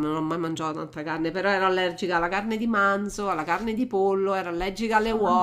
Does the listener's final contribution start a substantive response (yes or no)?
no